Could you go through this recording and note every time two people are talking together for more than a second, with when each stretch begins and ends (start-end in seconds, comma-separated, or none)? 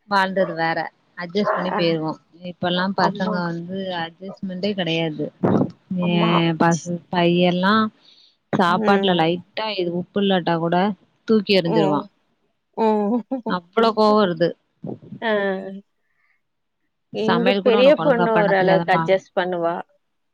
17.3-19.0